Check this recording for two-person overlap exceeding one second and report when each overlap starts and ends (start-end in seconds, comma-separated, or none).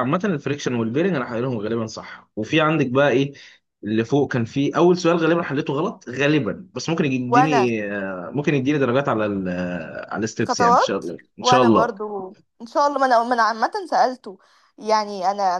10.4-11.9